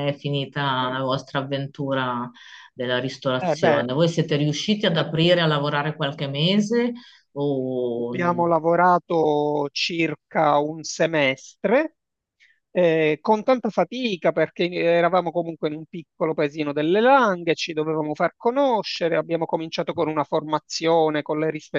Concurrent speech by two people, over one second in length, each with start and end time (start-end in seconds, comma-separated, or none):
none